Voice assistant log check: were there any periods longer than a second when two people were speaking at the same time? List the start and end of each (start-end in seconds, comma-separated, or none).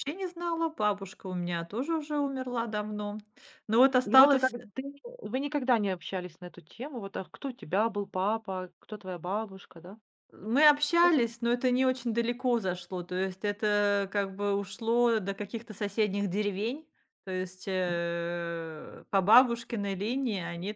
none